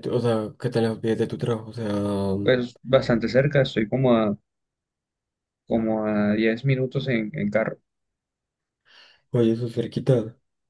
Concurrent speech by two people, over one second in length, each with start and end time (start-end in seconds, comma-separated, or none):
none